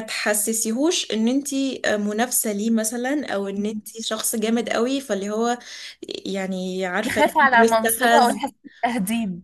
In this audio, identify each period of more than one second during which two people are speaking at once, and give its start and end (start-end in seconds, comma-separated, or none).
7.0-8.4